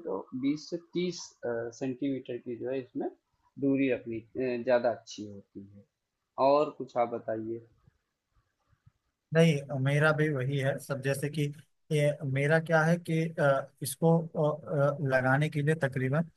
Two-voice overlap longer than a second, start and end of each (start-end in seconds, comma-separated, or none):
none